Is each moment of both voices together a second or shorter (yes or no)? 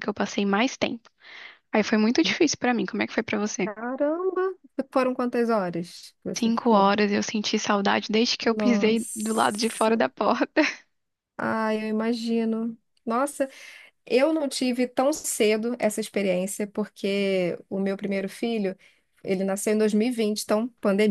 no